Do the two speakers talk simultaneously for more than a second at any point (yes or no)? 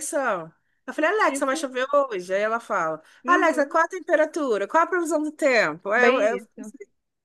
no